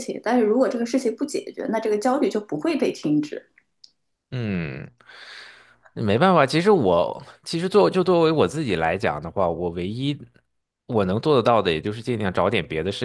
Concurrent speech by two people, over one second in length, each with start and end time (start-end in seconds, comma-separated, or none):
none